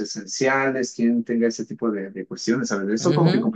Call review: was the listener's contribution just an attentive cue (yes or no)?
no